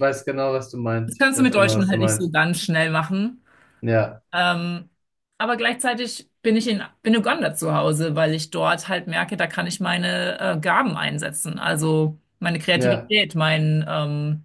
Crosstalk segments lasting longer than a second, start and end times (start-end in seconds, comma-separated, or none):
1.1-2.3